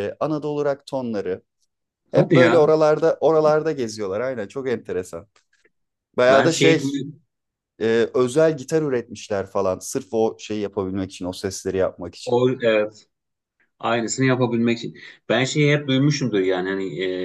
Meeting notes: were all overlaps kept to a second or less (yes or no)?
yes